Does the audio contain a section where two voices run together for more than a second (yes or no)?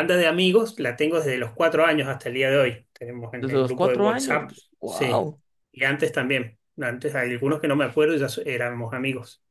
yes